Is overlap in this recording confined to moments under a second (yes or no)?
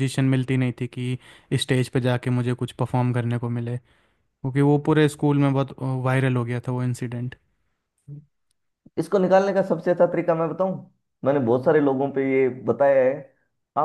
yes